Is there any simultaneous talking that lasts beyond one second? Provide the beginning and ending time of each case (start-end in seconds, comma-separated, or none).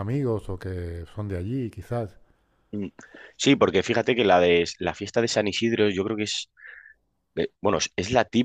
none